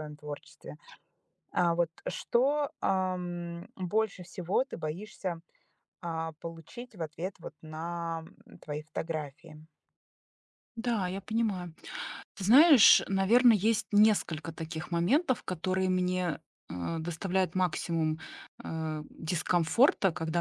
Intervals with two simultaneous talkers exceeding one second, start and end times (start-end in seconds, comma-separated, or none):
none